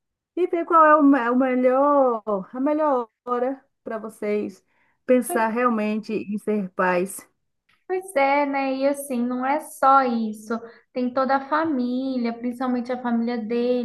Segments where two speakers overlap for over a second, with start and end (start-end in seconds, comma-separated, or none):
none